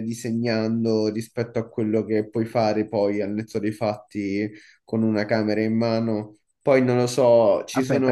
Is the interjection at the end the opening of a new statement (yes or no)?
yes